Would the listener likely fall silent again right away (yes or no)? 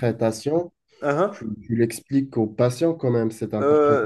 no